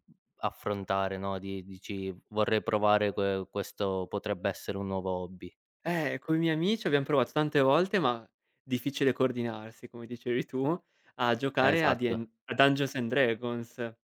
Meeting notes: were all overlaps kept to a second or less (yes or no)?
yes